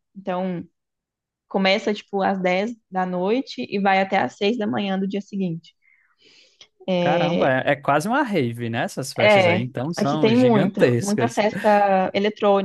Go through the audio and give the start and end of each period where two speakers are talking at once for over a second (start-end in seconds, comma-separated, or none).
9.2-11.4